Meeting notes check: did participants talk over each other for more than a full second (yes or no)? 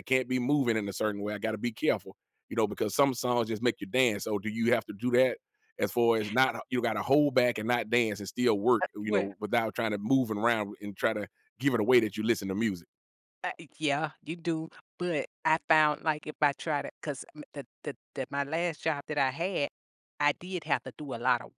no